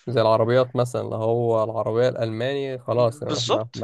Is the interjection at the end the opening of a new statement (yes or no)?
yes